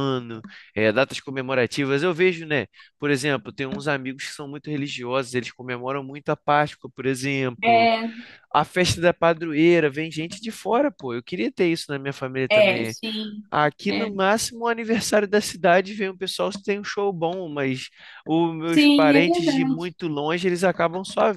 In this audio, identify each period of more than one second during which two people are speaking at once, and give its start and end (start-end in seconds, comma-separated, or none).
18.7-19.9